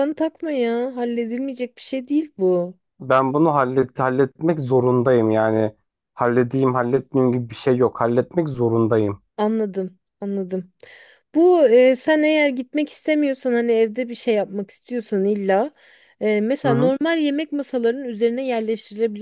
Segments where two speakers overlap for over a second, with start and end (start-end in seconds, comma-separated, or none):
none